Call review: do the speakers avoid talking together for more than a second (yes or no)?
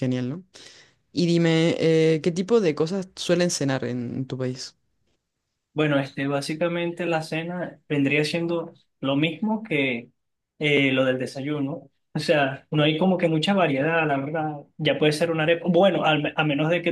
yes